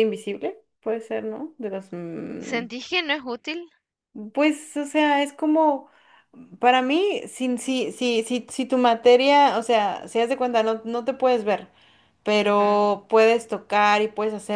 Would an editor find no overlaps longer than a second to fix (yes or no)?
yes